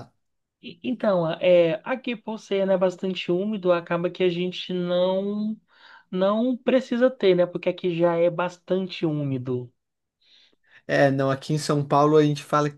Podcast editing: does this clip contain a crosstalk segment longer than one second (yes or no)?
no